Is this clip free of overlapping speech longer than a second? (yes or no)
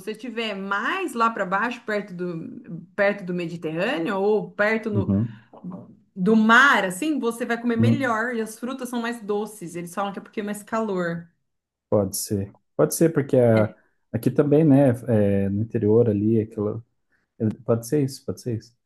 yes